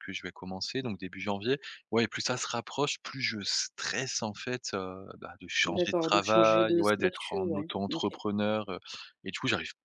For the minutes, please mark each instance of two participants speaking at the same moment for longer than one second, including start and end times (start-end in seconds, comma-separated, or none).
5.7-8.1